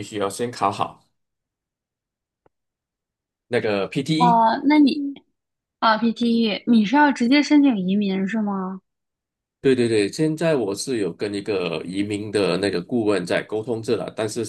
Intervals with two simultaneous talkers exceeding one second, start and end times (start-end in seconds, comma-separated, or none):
none